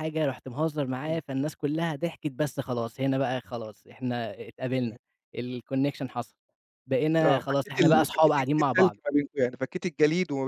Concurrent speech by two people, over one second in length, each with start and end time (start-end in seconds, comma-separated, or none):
7.2-9.0